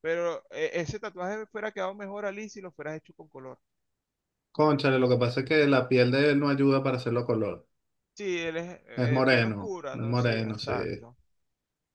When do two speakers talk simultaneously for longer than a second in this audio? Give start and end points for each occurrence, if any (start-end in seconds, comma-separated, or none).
9.2-10.7